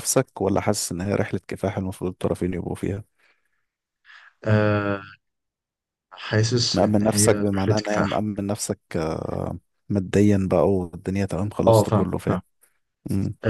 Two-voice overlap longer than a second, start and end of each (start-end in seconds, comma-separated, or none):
6.7-8.2